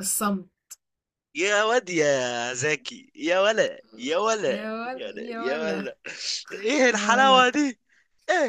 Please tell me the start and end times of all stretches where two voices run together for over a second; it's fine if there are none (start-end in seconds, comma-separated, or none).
4.5-5.9